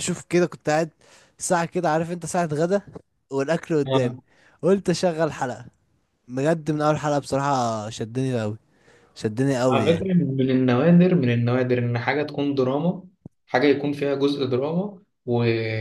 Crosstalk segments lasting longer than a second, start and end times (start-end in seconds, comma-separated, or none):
none